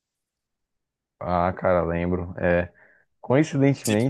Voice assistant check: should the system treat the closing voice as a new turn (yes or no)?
no